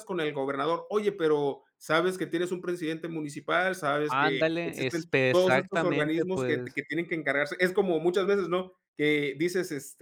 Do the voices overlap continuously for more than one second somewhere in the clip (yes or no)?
yes